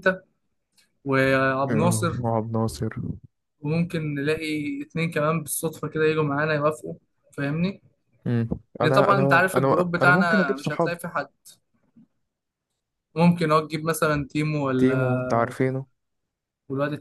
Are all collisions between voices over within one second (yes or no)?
no